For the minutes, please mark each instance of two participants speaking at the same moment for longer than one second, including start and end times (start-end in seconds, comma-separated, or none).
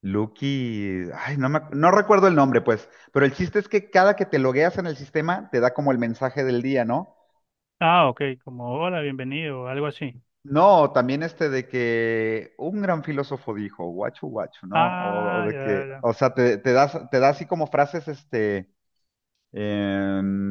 14.7-16.1